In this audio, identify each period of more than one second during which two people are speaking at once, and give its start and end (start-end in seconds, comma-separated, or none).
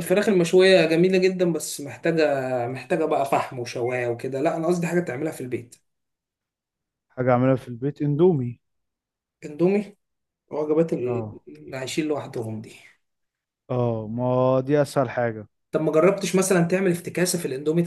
none